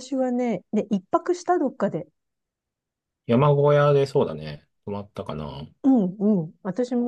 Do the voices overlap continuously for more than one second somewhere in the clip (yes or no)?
no